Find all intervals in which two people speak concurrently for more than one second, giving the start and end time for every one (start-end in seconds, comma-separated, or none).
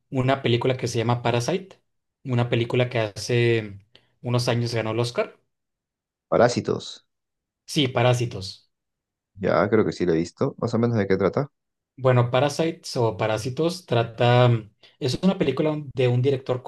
none